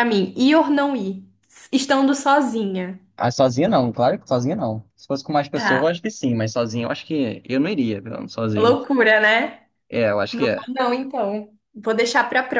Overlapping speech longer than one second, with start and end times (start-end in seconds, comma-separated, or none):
none